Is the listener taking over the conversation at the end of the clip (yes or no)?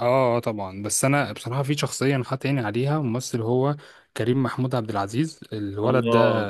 no